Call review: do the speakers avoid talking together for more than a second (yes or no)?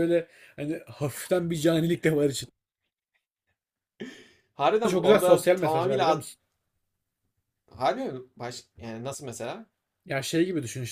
no